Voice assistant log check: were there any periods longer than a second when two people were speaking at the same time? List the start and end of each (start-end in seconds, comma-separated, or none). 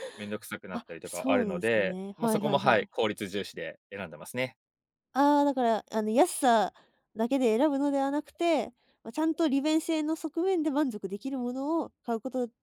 0.7-2.9